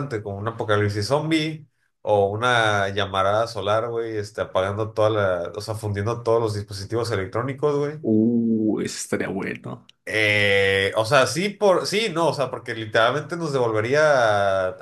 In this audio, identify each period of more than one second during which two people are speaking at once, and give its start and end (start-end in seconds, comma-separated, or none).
none